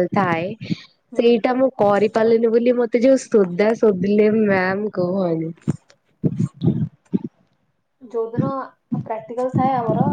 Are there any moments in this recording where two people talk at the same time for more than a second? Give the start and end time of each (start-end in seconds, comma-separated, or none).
none